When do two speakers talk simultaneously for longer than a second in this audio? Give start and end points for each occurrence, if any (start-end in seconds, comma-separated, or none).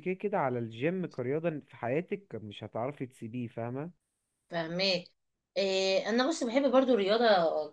none